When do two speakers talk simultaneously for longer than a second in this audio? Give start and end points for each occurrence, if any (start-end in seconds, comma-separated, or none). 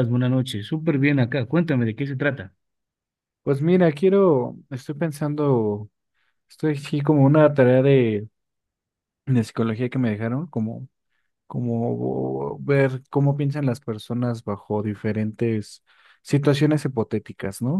none